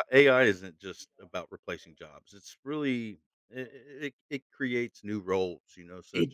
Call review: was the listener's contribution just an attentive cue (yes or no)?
no